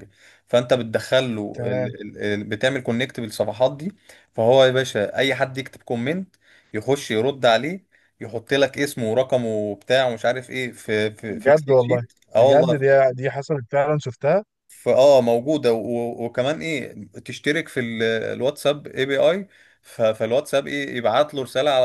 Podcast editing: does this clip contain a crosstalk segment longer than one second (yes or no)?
yes